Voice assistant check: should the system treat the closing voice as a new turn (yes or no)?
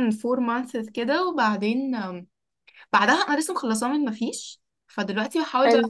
no